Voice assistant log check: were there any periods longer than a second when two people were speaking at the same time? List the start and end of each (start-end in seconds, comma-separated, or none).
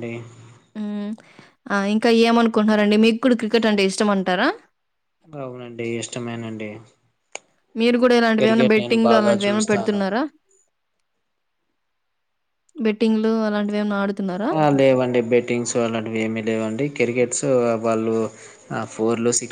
8.4-10.0